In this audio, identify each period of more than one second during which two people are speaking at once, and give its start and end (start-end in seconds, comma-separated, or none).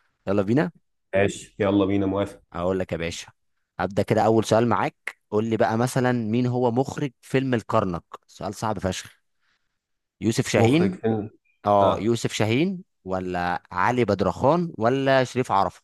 none